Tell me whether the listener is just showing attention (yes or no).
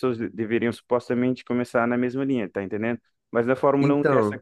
yes